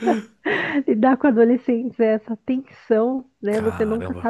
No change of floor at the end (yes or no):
yes